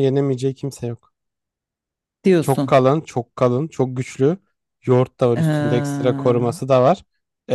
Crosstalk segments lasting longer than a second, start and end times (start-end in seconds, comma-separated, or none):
5.3-6.6